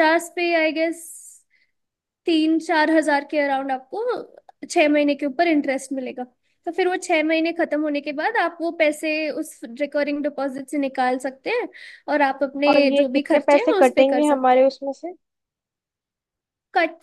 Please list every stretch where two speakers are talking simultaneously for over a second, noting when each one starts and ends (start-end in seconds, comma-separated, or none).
12.7-14.7